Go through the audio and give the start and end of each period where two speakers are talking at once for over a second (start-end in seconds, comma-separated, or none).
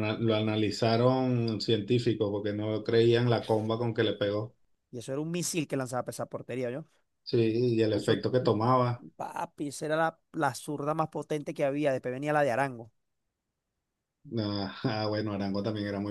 none